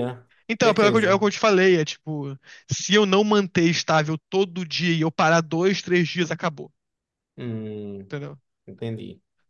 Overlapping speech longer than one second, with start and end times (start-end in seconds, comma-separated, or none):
none